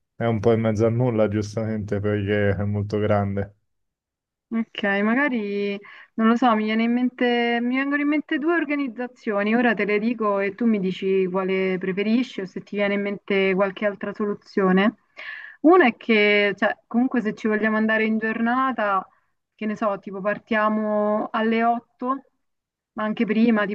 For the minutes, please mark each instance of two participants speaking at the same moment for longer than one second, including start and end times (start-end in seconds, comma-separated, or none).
none